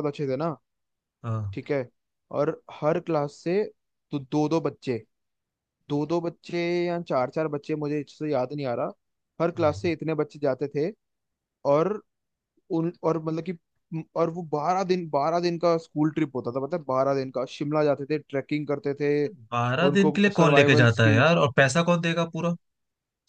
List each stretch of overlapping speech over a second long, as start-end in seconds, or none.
19.5-21.4